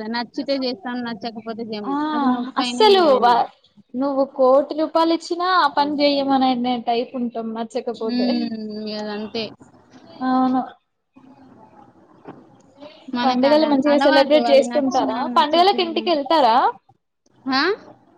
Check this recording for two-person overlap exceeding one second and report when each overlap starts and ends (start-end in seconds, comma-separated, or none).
13.3-16.0